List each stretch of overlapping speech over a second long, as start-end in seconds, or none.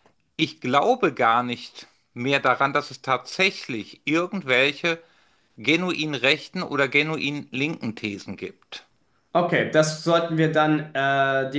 none